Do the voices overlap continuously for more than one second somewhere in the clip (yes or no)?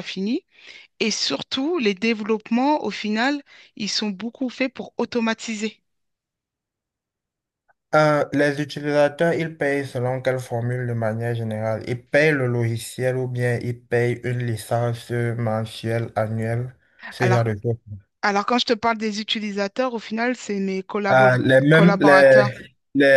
yes